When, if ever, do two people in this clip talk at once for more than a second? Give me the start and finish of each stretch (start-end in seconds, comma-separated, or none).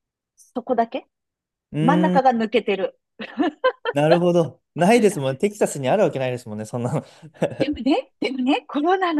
none